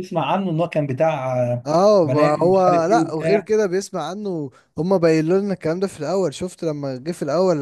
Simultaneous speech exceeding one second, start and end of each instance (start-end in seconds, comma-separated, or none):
2.0-3.5